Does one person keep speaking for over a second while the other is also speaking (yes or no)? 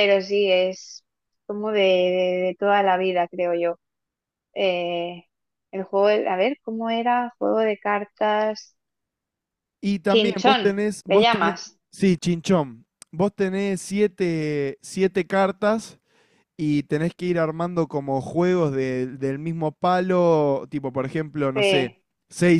yes